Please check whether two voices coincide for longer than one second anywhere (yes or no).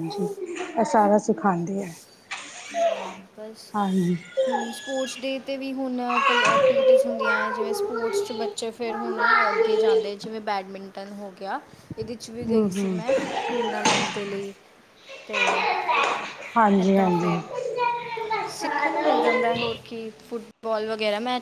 no